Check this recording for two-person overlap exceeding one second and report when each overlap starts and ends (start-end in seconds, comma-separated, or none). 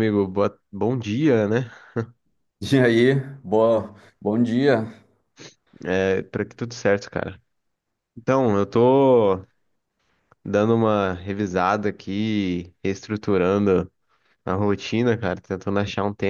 none